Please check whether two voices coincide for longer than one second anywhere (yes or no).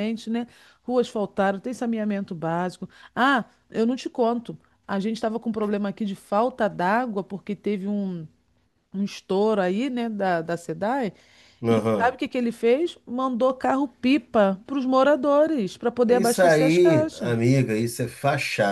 yes